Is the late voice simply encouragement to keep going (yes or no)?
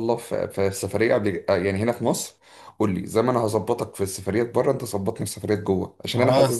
yes